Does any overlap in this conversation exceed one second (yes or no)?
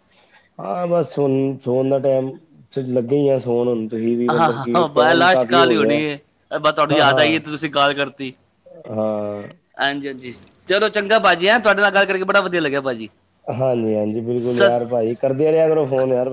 yes